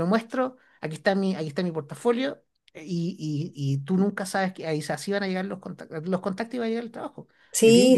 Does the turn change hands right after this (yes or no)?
yes